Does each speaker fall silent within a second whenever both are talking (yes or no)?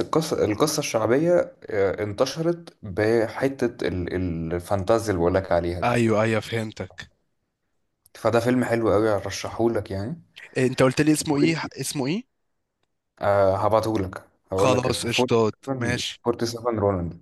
no